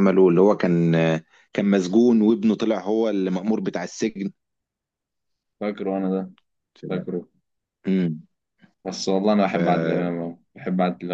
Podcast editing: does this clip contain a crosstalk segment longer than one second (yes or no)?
no